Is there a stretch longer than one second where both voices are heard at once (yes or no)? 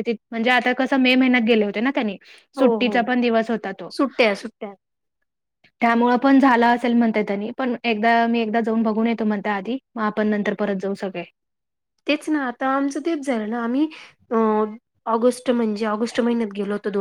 no